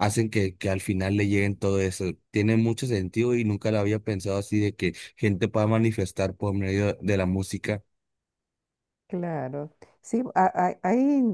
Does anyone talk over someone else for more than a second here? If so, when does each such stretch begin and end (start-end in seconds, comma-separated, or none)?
none